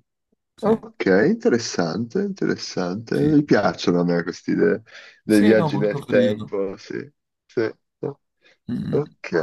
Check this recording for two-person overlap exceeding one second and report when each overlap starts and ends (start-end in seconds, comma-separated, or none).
5.2-6.6